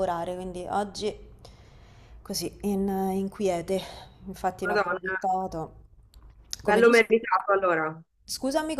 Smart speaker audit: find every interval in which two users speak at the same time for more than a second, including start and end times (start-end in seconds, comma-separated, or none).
none